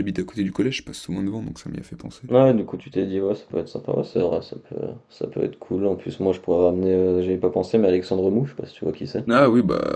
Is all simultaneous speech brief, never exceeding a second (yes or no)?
yes